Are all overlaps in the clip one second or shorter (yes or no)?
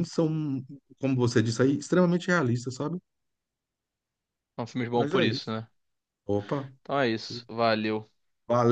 yes